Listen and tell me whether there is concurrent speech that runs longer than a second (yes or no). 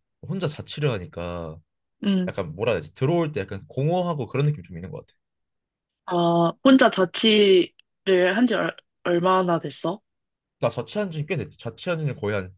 no